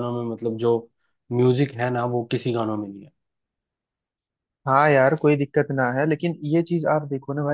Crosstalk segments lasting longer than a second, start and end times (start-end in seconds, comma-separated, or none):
none